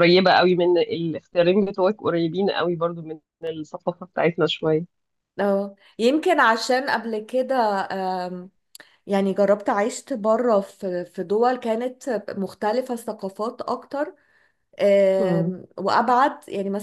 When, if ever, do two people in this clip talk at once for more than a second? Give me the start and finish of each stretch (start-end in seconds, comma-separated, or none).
none